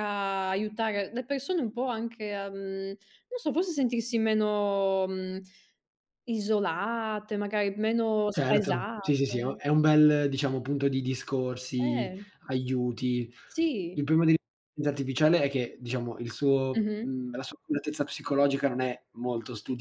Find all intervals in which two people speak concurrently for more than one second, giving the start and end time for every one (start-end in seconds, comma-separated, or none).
8.3-9.6